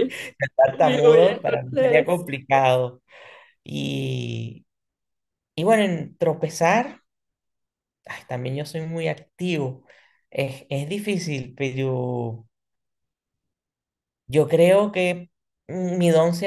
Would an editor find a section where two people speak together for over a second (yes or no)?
yes